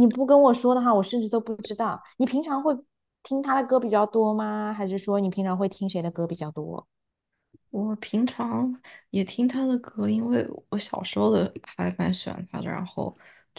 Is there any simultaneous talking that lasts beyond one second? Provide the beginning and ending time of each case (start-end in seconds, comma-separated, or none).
none